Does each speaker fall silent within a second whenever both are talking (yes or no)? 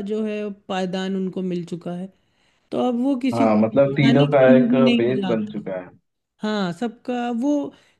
no